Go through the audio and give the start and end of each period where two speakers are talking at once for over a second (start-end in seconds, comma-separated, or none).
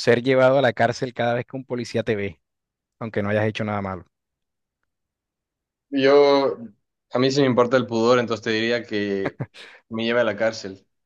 none